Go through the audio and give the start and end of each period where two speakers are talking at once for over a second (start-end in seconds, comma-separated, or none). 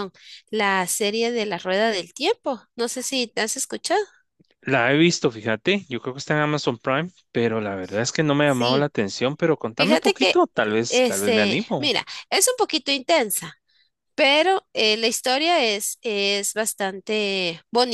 9.8-12.0